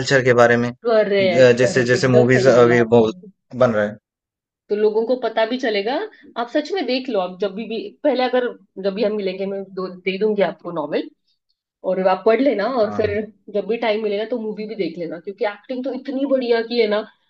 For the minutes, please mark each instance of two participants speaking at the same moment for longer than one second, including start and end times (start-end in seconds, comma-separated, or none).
0.8-3.1